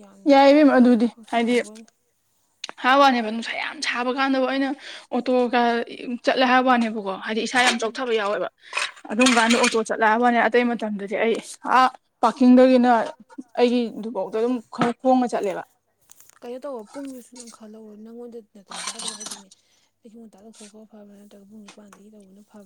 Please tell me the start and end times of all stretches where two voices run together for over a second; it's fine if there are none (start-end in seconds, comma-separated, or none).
none